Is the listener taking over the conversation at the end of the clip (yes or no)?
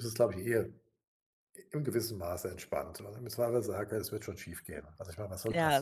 yes